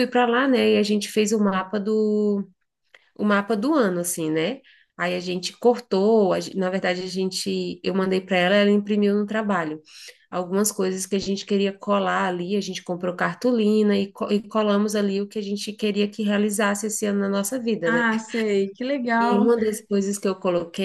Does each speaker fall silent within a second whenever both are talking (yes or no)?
yes